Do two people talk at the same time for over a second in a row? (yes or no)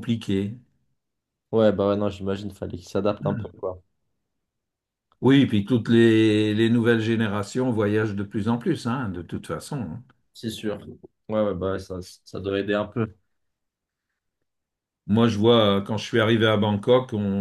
no